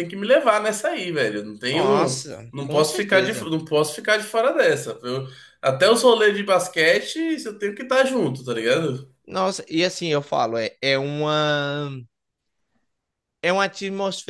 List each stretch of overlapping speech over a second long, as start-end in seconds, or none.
1.7-3.5